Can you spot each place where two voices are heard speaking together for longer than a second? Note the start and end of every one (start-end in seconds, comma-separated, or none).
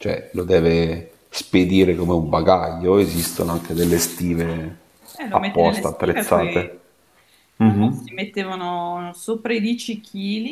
5.3-6.7